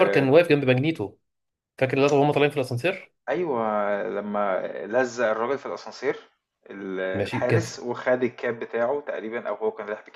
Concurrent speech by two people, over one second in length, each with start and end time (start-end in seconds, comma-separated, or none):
none